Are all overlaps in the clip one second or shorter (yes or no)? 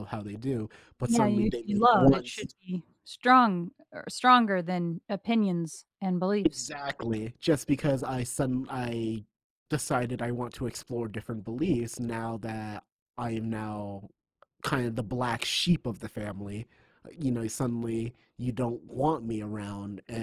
no